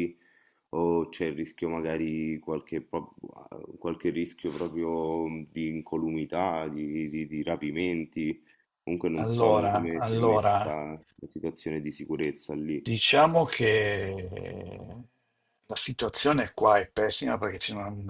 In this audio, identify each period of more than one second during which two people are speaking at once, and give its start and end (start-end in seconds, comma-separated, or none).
9.1-10.8